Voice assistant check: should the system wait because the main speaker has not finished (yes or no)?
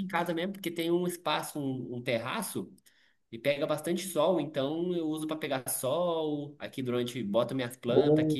yes